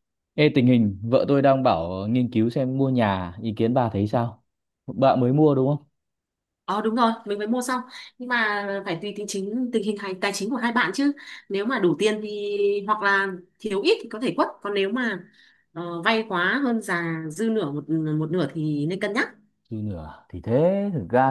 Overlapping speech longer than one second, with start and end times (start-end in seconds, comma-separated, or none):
none